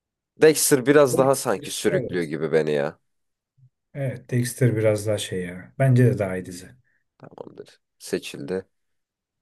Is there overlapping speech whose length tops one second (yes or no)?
yes